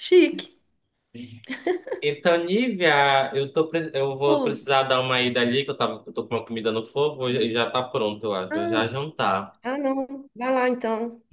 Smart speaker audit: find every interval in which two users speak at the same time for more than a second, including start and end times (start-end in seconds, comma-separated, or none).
none